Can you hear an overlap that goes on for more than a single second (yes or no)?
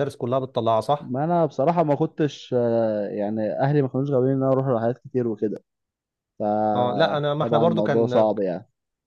yes